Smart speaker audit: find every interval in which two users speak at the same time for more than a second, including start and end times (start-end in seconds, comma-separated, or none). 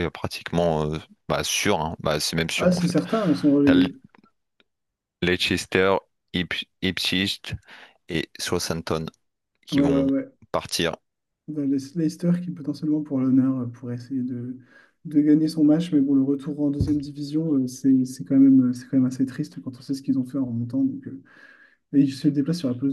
none